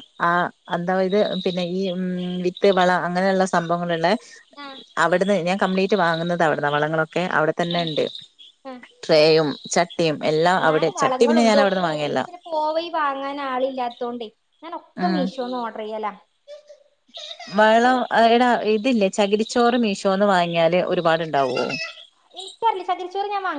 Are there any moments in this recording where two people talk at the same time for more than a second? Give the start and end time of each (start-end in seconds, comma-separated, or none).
10.6-12.2